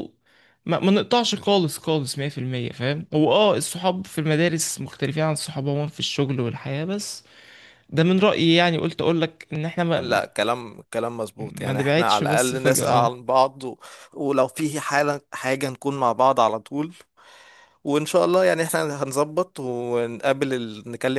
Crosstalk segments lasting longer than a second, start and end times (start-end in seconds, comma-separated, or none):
11.4-13.1